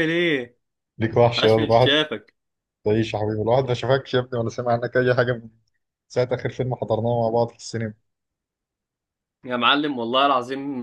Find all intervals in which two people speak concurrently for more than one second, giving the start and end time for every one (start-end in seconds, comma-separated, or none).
none